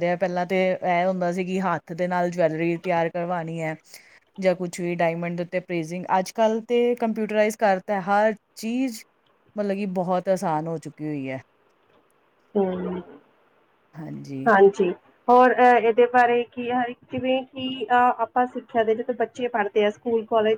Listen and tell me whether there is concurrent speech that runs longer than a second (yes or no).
no